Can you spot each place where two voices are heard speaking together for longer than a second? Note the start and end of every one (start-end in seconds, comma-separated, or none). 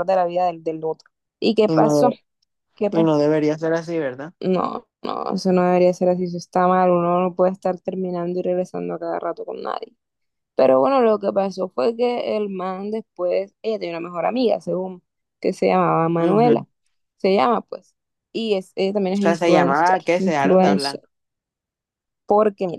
19.1-21.0